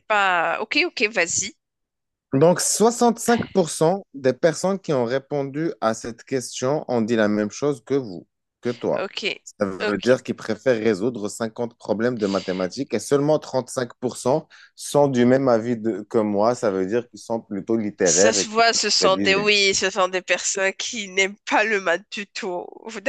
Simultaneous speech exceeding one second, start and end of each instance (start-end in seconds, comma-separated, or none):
18.1-19.5